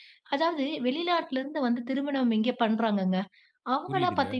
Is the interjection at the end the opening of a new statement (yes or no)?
no